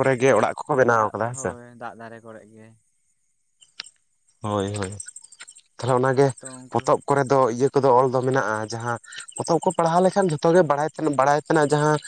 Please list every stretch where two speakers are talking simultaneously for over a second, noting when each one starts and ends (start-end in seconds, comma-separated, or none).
none